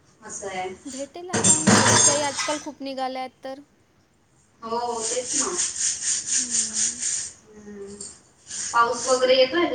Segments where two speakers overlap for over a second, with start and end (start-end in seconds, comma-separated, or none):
none